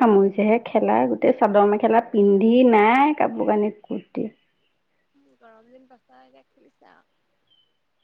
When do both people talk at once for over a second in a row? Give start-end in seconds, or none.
none